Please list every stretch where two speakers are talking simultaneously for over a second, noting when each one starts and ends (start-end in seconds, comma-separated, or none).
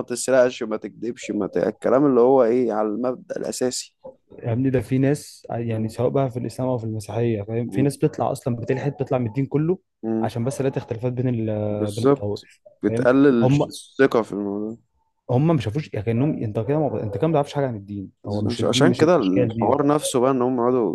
11.7-13.7, 18.4-19.7